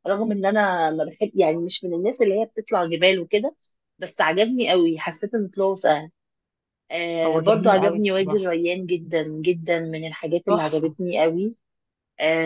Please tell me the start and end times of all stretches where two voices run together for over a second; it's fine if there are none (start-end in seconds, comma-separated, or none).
7.2-8.5